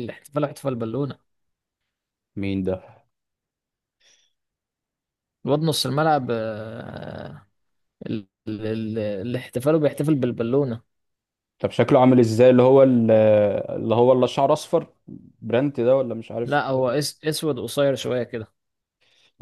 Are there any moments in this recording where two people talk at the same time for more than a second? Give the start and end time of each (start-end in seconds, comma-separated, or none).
none